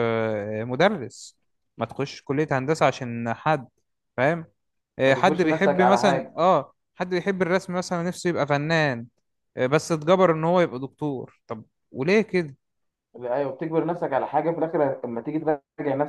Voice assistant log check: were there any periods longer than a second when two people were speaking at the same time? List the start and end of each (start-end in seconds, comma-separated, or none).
5.0-6.4